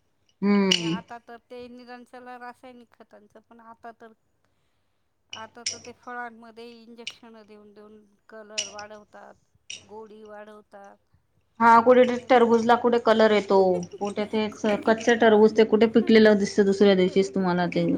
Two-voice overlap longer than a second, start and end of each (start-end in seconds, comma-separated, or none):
none